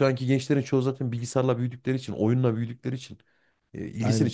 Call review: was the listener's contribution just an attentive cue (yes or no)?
yes